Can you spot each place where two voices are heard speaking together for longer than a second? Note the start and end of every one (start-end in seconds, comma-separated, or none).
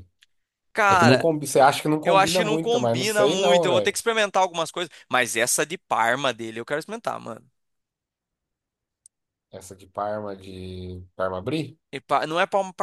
2.0-4.0